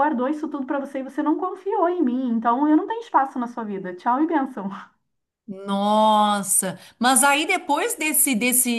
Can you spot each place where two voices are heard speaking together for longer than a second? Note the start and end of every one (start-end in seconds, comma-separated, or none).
none